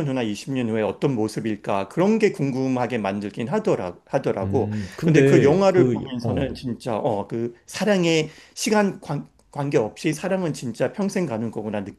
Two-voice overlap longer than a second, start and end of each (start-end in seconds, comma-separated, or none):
4.4-6.6